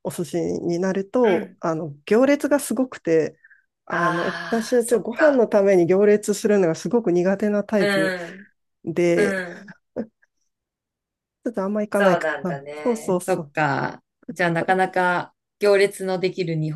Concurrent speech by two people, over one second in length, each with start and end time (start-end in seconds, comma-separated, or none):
3.9-5.5, 11.9-13.5